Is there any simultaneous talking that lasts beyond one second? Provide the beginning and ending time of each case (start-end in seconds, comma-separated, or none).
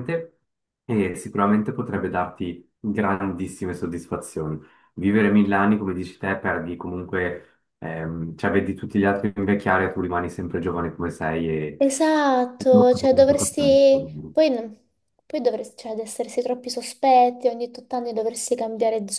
12.7-14.1